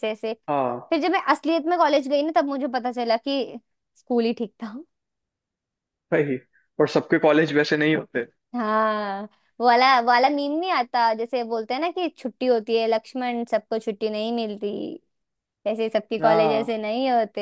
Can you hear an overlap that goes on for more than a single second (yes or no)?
no